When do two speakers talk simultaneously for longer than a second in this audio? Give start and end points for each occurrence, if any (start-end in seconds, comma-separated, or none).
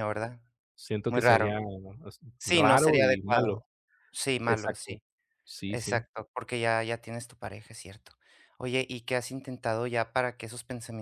2.4-3.6